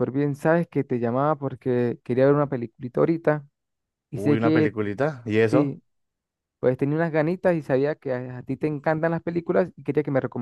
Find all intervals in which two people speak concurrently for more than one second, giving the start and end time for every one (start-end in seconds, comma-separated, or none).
none